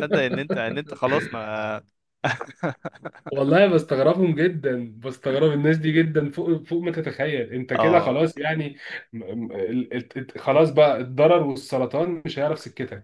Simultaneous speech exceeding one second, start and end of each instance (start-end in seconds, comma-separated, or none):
none